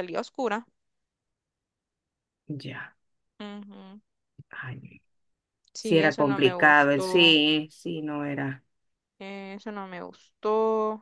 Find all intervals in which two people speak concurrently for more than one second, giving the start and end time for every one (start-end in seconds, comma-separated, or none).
5.8-7.4